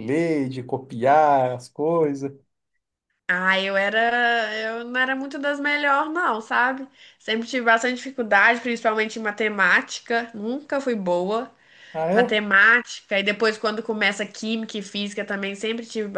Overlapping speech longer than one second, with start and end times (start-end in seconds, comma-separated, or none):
none